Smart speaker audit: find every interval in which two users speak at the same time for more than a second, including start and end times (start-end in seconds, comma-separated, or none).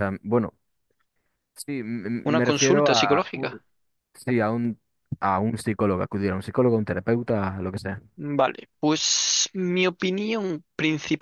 2.2-3.6